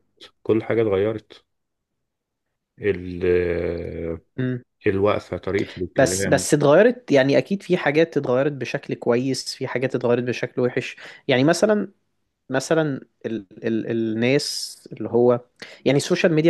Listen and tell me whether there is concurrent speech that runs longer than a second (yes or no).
no